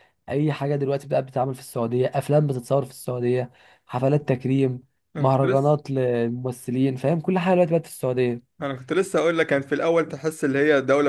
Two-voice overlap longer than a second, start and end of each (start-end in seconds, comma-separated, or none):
none